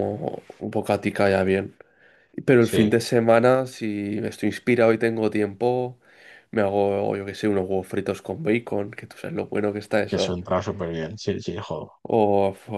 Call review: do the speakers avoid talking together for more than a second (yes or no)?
yes